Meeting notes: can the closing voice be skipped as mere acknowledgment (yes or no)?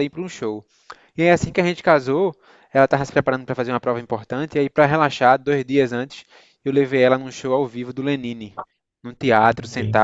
yes